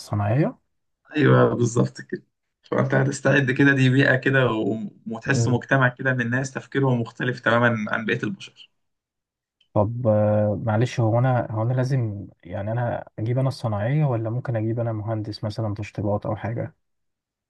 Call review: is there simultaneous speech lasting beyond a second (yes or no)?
no